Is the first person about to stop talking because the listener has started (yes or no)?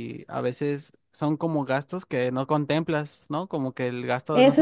yes